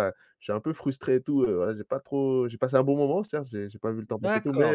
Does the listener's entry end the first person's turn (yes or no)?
yes